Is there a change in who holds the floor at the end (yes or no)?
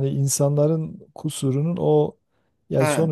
no